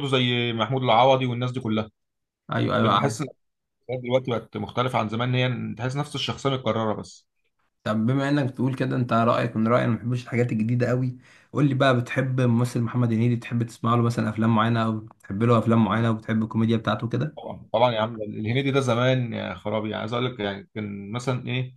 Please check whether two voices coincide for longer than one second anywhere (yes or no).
no